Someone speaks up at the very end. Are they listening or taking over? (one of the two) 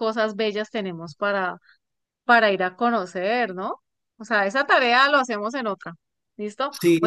listening